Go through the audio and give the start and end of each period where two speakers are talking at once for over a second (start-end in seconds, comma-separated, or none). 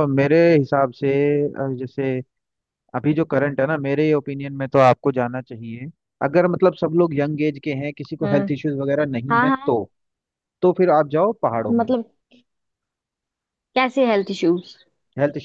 none